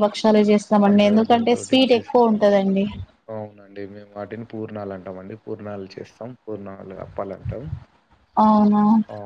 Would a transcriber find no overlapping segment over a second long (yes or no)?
no